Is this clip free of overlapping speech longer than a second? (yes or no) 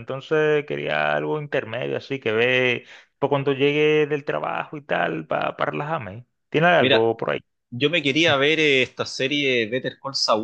yes